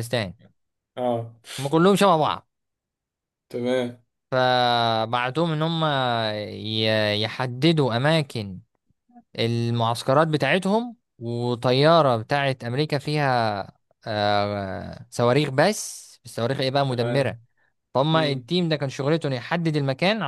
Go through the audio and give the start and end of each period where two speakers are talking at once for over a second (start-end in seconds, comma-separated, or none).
none